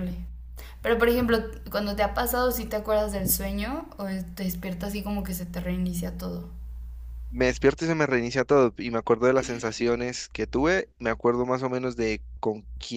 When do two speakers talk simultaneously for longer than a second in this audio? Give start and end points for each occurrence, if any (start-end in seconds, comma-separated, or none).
none